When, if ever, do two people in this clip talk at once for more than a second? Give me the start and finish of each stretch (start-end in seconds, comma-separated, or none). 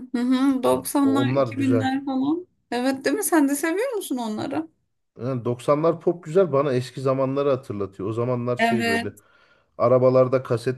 0.7-1.9